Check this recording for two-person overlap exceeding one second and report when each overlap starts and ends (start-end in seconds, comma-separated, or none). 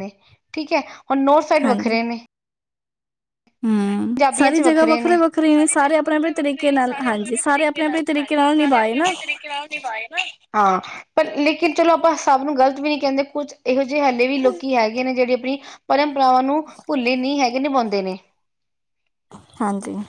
3.9-9.1